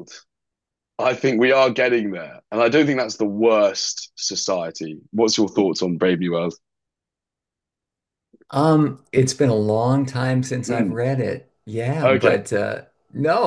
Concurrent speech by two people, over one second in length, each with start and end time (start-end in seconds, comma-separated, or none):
none